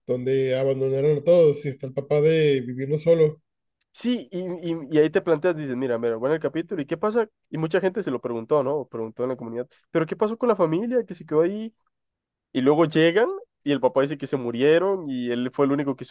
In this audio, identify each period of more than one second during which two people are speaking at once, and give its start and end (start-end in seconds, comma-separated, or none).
none